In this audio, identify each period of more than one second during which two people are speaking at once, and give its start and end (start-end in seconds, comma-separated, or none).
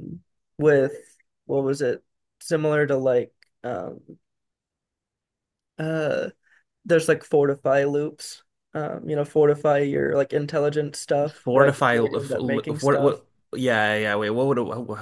11.4-13.2